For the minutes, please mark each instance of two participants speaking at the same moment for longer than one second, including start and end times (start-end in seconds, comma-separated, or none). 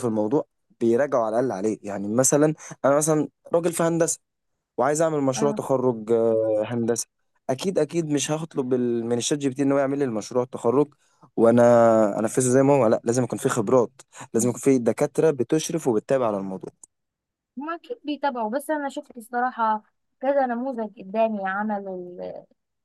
none